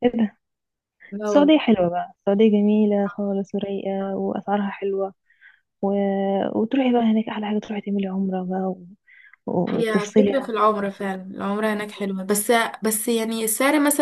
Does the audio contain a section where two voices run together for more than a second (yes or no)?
yes